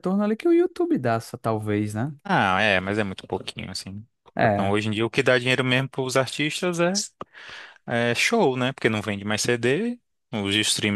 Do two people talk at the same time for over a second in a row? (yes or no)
no